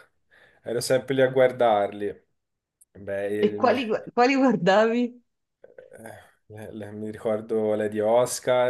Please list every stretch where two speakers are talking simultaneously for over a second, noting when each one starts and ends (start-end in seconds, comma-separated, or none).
none